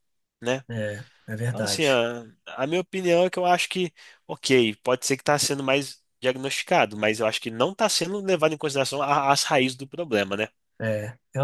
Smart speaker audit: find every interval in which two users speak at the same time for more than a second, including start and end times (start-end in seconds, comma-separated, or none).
none